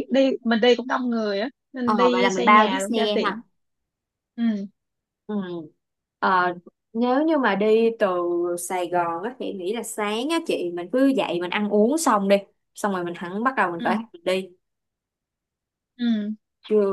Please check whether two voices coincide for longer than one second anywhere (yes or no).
yes